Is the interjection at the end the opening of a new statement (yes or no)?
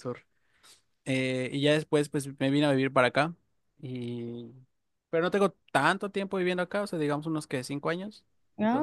yes